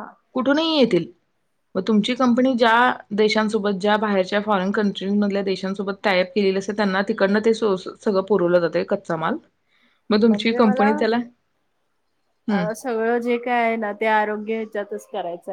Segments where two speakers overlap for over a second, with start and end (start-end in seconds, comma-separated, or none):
none